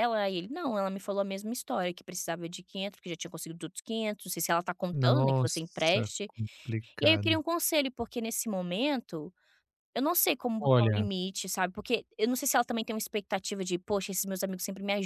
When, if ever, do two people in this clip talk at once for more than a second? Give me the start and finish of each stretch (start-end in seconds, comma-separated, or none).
4.9-6.3